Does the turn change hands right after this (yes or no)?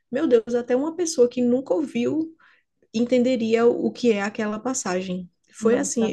no